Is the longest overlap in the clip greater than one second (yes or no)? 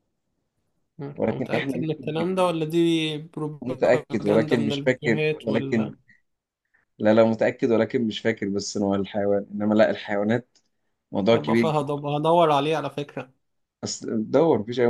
yes